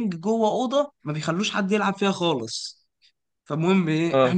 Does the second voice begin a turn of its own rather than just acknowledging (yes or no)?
no